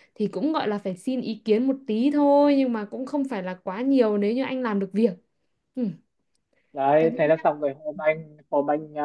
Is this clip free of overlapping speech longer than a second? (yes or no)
yes